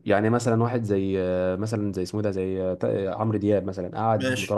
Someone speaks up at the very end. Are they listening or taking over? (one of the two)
listening